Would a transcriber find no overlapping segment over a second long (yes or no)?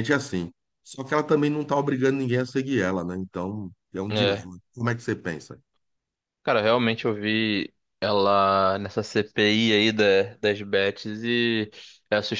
yes